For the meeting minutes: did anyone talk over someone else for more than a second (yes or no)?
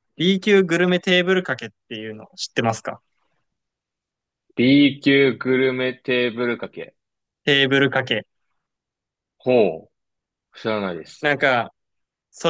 no